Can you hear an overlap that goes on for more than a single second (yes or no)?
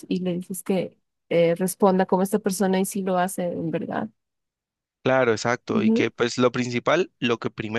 no